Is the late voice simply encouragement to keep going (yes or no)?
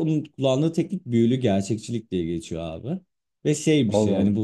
yes